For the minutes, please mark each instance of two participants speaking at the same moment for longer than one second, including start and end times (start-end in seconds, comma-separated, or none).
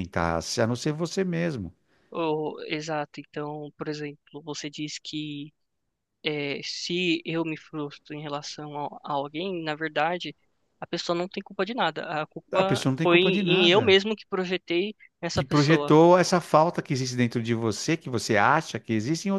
12.5-14.0